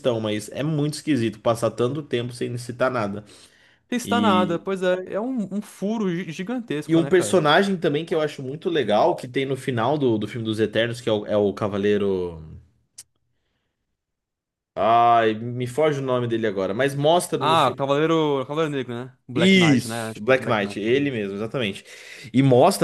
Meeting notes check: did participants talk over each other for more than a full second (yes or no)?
yes